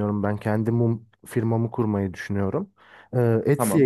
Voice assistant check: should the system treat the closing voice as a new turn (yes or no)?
no